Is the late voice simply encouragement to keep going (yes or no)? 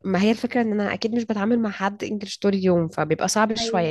yes